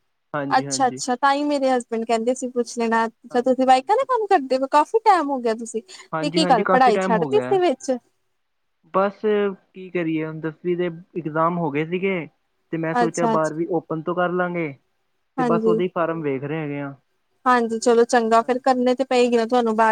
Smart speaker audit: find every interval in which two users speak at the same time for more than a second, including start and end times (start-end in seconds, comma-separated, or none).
6.2-7.6